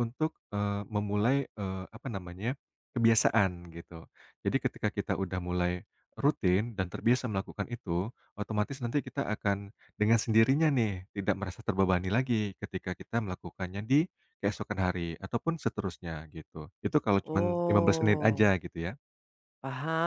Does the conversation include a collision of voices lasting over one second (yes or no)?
yes